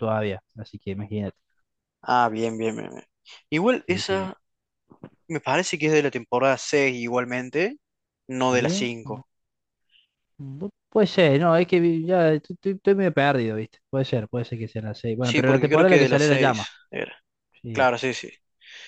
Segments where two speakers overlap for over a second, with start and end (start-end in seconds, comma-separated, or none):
15.2-16.7